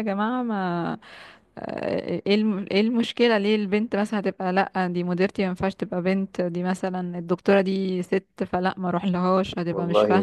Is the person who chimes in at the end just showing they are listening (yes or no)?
no